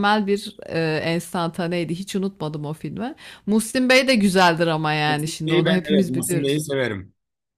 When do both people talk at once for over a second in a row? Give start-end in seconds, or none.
5.1-6.6